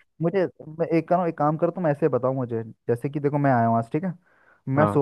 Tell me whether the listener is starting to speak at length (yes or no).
no